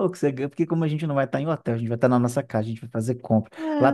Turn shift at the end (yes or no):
no